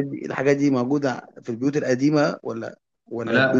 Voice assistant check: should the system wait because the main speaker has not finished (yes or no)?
no